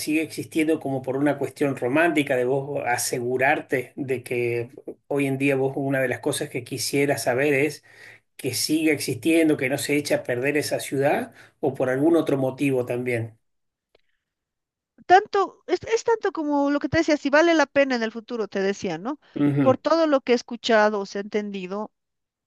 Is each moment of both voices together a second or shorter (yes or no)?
yes